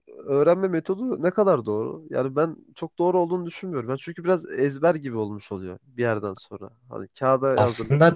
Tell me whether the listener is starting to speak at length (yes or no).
no